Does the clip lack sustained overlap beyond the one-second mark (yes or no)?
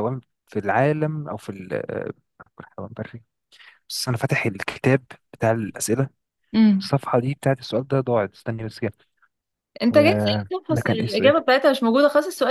no